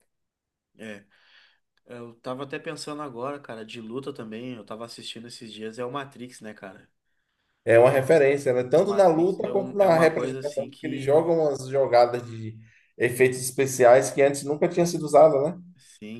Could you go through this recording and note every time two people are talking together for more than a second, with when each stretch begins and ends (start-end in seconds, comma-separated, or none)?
8.8-11.3